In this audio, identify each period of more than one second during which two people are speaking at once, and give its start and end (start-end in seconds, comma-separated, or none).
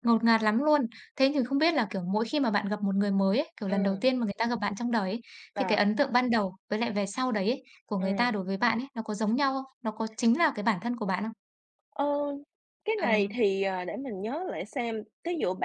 none